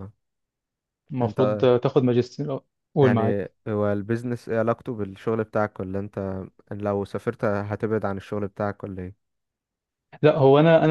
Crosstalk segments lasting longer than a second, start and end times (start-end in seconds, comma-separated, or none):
none